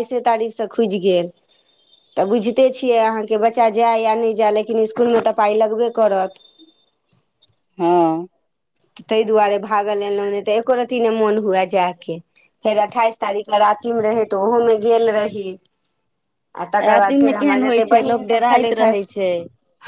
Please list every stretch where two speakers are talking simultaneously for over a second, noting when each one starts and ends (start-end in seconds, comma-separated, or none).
16.9-18.9